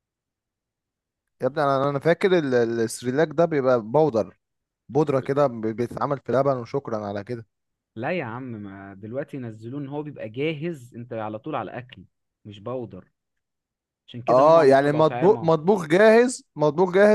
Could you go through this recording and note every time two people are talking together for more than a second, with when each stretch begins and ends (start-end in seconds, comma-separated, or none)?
14.3-15.5